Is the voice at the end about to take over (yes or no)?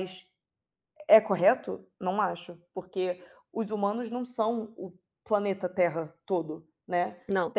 no